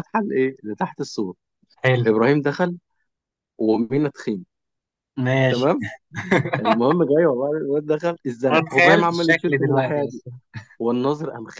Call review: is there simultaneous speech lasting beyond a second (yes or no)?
yes